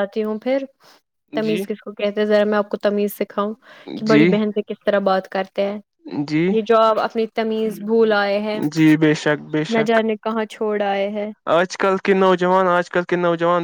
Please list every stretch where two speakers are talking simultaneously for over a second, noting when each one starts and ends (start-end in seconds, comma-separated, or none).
none